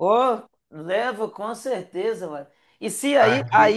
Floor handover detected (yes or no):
no